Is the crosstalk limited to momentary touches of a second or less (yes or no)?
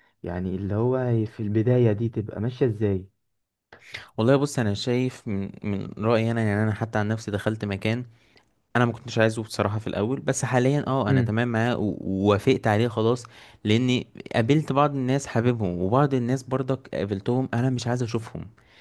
yes